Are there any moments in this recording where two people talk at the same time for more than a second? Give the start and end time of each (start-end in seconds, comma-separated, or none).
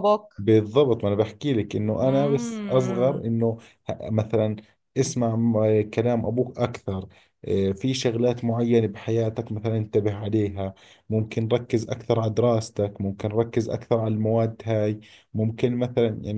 2.0-3.3